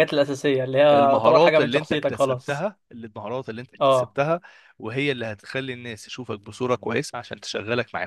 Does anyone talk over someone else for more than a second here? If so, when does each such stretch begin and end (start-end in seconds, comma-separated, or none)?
0.9-2.7